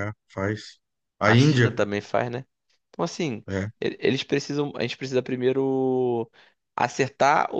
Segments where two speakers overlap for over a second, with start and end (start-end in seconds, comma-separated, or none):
none